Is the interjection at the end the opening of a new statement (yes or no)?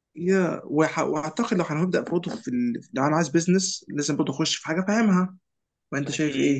yes